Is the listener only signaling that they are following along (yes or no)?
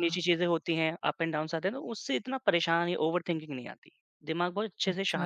no